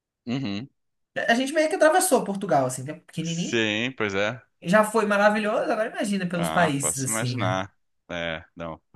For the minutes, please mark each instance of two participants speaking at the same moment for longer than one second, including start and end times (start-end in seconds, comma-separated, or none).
6.3-7.6